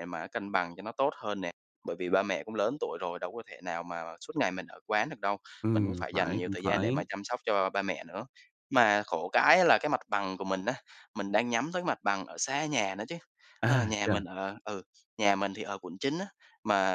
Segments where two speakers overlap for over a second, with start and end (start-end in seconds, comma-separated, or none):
5.7-7.0